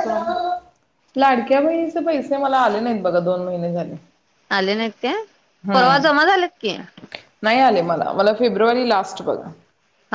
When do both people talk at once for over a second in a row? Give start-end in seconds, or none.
none